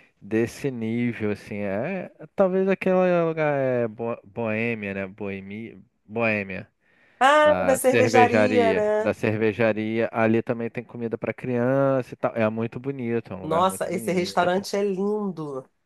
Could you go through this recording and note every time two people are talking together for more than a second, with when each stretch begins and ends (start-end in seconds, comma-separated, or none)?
7.4-9.2, 13.4-14.6